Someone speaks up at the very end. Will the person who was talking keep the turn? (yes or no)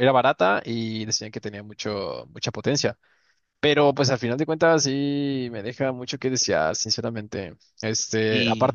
yes